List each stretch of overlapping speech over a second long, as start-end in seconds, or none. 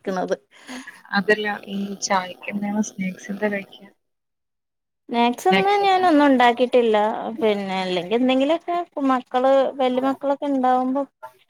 none